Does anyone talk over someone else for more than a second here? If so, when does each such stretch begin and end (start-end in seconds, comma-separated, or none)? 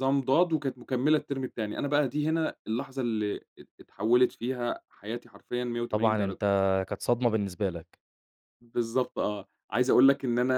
none